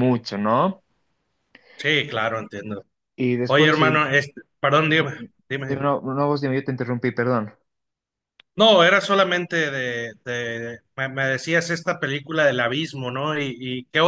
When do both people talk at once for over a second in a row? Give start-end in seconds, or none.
none